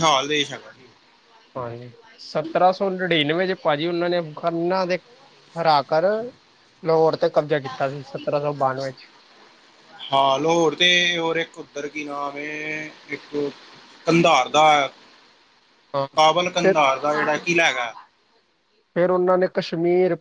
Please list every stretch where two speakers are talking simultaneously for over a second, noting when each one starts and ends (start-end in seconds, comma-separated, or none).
none